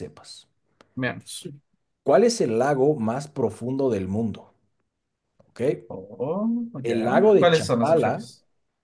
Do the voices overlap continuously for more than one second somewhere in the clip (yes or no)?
yes